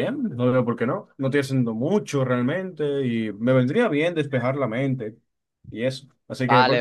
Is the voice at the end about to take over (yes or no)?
yes